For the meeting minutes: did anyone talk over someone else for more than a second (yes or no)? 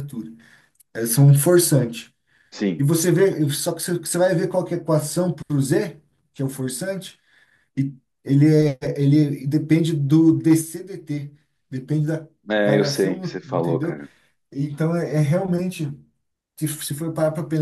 yes